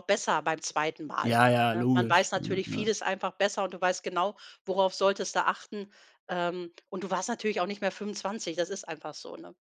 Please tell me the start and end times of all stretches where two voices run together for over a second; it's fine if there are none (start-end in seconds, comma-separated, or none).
1.2-2.9